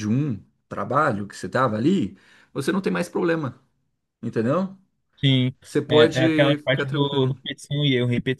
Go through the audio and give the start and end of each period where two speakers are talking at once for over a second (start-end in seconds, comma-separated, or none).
5.9-7.3